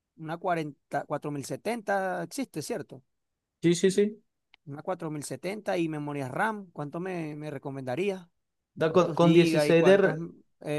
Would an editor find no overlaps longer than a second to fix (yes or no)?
no